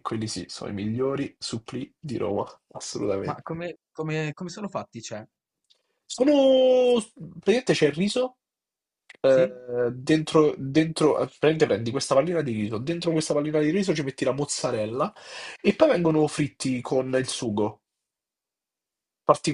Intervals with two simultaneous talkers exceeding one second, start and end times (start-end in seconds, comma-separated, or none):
none